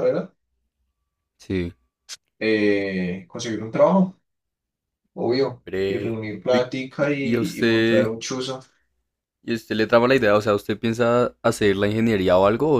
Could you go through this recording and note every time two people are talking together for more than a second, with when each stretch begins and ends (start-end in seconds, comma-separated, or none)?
5.7-8.1